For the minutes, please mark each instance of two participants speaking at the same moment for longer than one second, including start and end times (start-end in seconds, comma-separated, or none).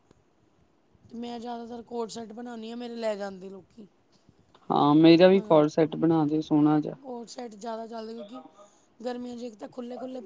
none